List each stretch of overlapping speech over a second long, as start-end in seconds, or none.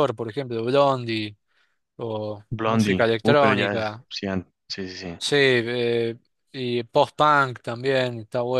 2.5-4.0